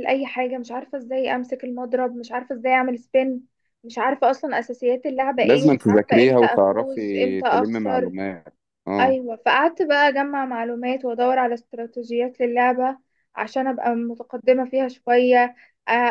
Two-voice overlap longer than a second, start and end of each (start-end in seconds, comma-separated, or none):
5.4-8.1